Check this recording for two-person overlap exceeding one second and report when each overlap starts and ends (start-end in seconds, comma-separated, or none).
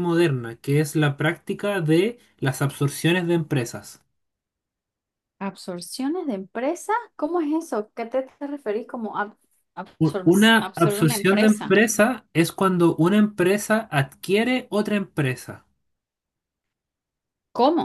10.0-11.7